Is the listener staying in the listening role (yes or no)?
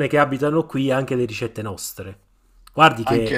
yes